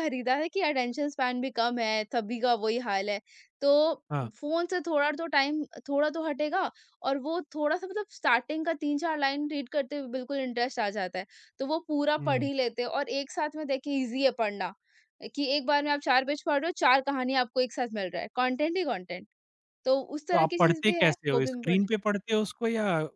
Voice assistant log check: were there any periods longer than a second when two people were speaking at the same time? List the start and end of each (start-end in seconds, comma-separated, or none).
20.3-21.8